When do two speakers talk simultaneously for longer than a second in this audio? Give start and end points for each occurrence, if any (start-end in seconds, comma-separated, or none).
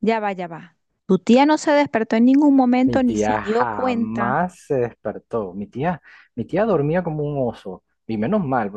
2.8-4.5